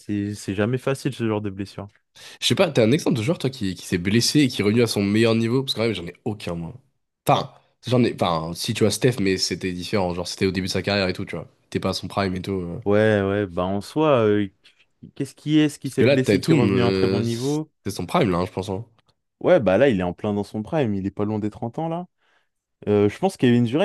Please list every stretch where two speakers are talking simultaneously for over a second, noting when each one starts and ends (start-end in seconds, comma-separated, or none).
15.8-17.7